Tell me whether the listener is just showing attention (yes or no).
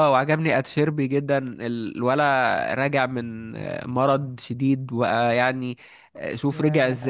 yes